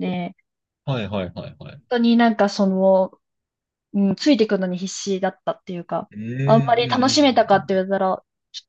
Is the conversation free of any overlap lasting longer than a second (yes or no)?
no